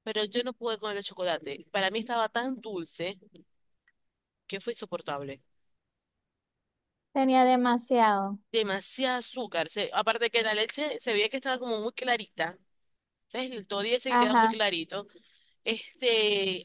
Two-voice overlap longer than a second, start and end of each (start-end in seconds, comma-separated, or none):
none